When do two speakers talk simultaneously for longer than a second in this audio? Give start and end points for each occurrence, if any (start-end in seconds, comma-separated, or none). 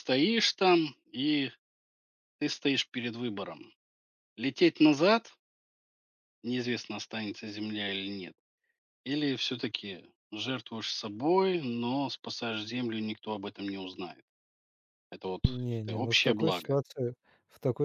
15.4-16.8